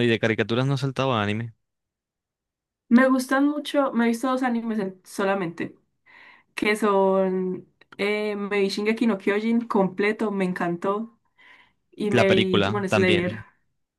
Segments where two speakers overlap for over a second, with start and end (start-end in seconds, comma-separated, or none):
12.1-13.4